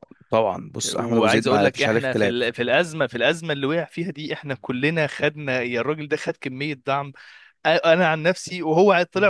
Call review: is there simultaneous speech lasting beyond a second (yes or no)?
yes